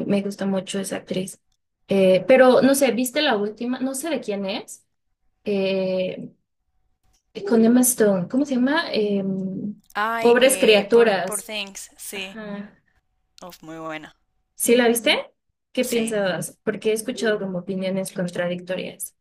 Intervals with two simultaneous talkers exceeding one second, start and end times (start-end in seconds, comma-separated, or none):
10.2-11.5